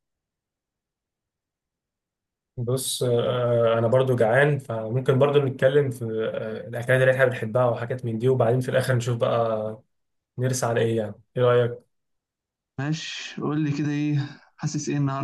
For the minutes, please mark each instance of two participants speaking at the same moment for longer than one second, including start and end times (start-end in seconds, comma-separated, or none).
none